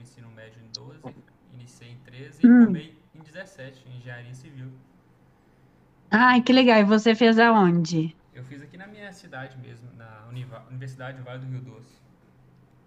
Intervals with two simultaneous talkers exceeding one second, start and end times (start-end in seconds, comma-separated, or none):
none